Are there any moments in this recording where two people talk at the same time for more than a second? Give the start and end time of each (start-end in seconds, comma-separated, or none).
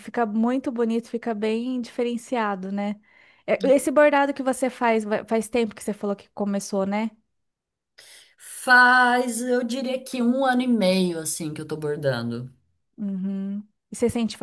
none